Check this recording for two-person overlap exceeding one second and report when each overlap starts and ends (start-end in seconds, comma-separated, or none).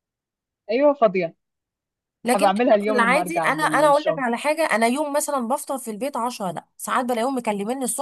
2.3-4.2